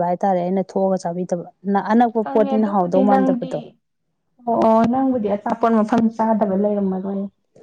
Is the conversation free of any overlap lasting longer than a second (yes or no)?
no